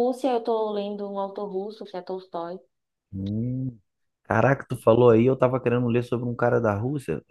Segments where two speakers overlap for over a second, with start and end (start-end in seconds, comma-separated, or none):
none